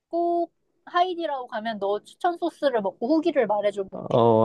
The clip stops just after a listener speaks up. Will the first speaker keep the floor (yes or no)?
no